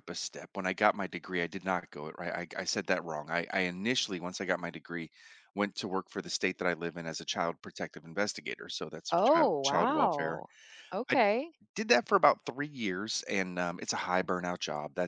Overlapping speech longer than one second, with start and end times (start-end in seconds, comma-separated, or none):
9.1-10.4